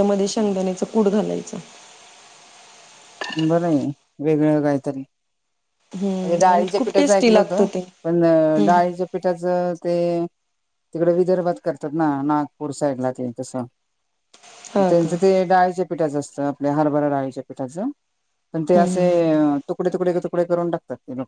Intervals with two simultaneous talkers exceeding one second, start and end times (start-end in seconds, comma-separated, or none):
6.2-7.7